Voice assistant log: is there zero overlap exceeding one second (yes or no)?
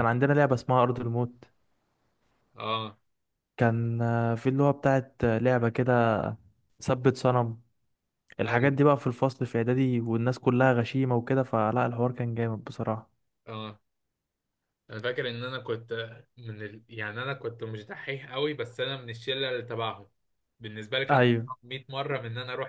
yes